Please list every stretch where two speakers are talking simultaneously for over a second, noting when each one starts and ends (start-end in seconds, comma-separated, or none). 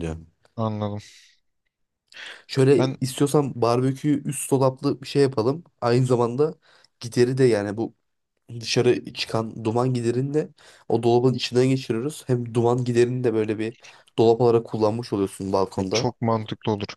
none